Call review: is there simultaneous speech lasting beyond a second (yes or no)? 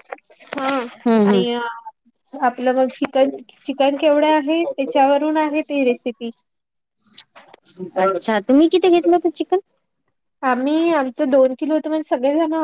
no